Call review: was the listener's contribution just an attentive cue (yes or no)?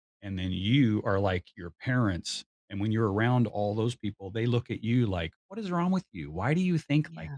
yes